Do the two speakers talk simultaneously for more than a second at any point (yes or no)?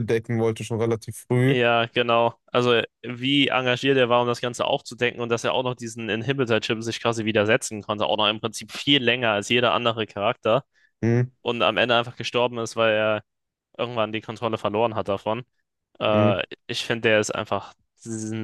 no